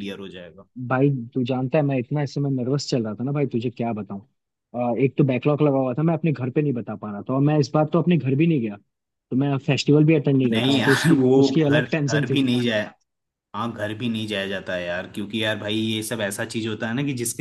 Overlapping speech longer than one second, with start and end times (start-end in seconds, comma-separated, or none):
10.5-12.4